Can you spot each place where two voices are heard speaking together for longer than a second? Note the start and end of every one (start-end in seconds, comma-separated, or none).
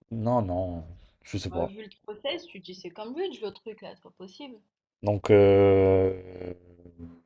none